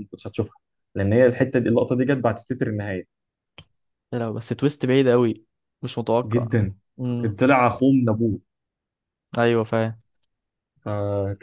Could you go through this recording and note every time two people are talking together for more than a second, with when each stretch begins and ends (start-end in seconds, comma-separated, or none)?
none